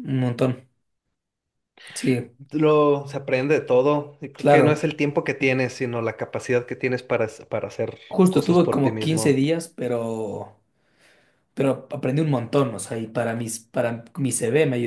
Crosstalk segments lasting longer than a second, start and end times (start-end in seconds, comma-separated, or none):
8.1-9.4